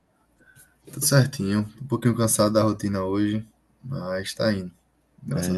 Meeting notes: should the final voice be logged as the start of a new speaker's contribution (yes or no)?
yes